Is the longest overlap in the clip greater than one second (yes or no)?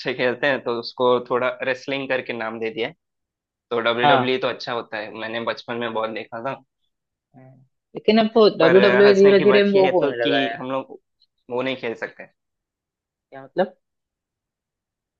yes